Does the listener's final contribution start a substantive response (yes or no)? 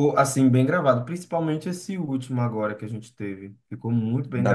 yes